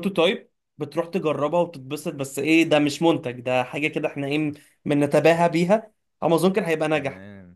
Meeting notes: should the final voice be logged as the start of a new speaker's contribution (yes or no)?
no